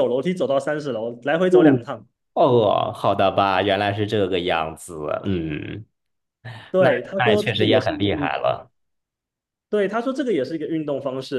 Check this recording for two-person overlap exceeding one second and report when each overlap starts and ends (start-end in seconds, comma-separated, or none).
6.8-8.3